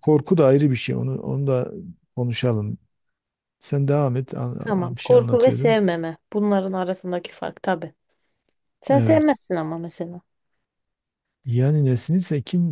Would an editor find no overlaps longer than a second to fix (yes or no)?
no